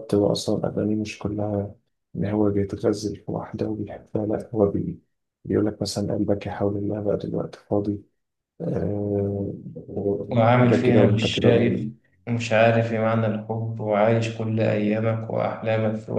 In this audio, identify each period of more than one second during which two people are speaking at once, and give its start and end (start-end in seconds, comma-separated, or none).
10.6-11.9